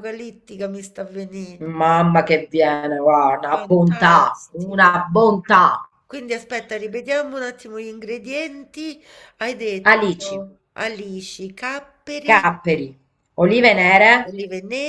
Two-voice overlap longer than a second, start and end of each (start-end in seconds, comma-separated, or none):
3.5-4.9